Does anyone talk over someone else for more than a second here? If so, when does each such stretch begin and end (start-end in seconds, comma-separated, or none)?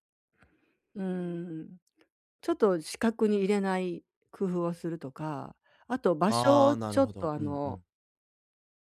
6.3-7.8